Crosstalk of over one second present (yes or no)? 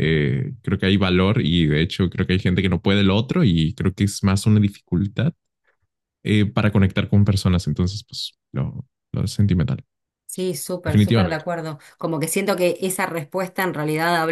no